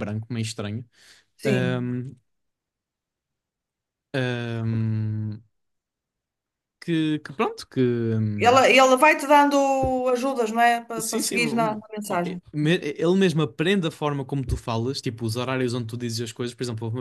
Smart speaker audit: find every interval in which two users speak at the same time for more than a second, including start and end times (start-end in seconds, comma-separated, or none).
11.0-12.4